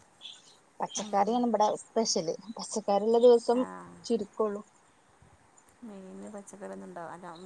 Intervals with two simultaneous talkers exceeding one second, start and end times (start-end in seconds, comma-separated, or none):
none